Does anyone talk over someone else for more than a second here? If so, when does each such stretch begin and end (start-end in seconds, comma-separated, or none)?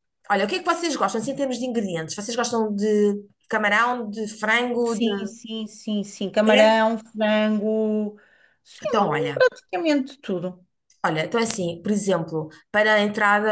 none